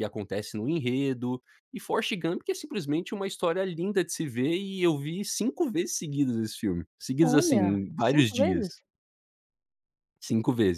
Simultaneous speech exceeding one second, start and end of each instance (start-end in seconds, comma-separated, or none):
7.2-8.7